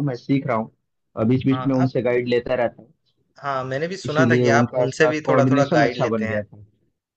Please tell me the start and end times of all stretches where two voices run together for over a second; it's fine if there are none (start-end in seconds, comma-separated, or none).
4.0-6.4